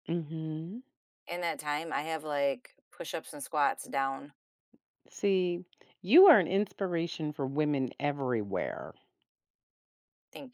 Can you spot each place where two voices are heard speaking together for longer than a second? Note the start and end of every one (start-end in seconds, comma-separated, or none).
none